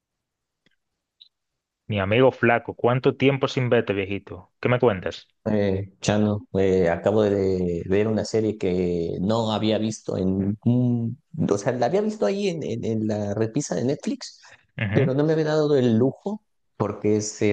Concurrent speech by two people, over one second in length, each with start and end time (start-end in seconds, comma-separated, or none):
none